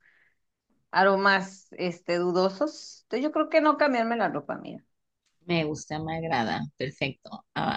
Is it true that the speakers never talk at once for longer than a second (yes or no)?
yes